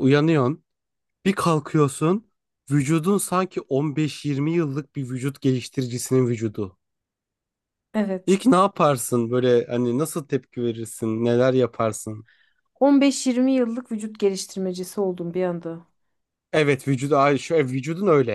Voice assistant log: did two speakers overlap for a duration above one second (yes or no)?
no